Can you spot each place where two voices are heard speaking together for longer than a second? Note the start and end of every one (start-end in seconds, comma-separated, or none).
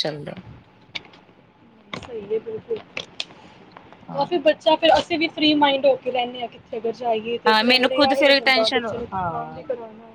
7.5-9.5